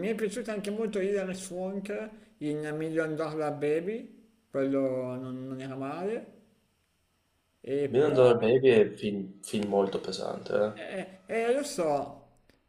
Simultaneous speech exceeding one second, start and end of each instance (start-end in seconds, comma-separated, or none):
none